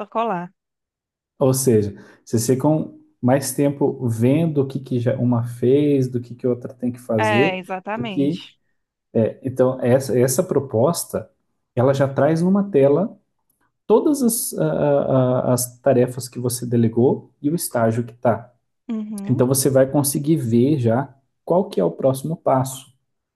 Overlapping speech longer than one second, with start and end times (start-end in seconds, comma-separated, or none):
7.2-8.5